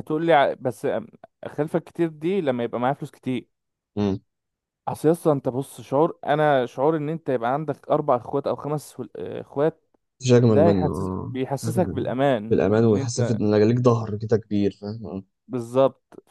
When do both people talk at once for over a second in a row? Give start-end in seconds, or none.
10.5-12.1